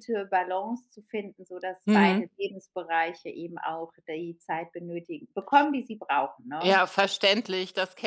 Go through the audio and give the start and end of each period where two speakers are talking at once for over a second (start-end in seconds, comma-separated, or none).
none